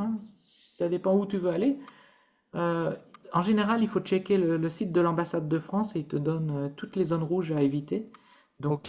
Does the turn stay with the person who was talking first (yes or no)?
yes